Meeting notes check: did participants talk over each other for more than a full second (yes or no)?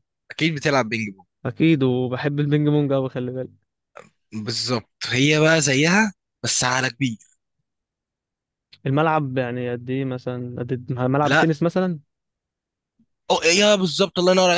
no